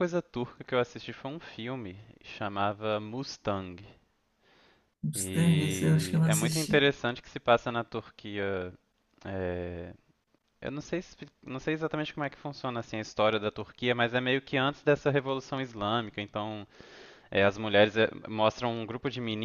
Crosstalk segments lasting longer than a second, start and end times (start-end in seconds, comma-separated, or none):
5.2-6.9